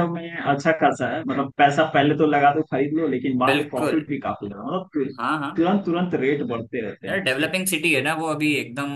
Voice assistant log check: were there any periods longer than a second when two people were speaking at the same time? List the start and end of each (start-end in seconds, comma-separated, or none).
none